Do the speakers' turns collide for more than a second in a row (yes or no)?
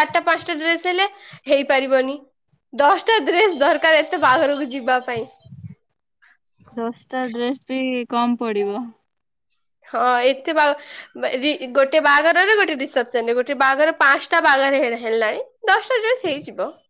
no